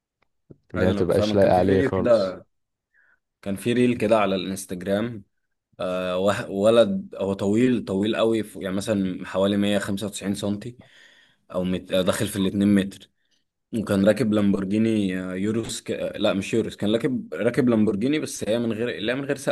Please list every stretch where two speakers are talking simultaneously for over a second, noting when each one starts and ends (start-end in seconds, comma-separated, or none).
0.8-2.4